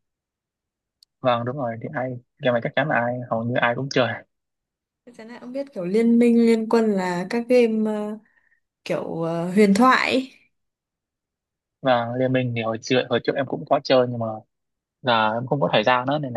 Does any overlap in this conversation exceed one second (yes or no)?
no